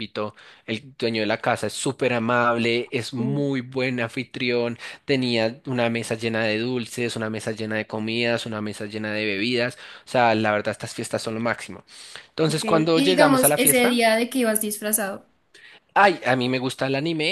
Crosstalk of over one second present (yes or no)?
yes